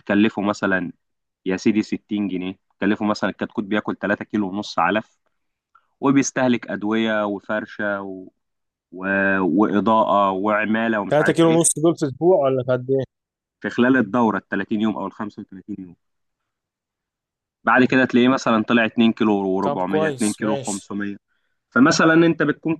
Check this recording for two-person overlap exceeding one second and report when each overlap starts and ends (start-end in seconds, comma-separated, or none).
19.6-20.9